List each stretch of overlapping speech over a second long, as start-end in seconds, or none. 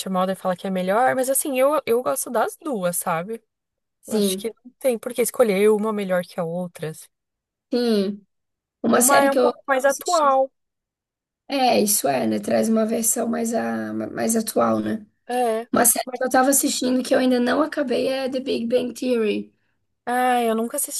8.9-10.3